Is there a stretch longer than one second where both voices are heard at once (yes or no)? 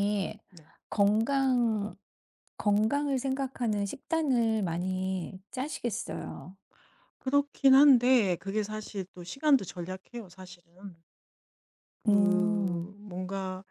no